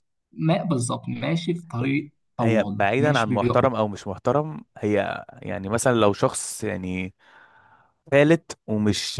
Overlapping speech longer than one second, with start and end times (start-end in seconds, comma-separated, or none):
2.4-3.6